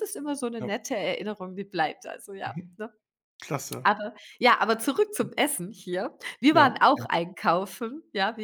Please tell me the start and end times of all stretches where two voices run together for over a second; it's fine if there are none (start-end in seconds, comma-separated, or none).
none